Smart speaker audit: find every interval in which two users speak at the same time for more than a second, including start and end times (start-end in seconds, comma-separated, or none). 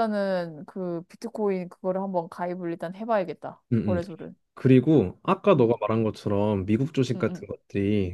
none